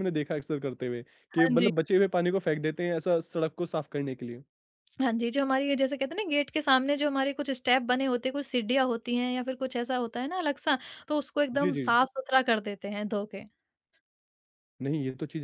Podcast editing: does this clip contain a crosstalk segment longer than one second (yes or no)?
no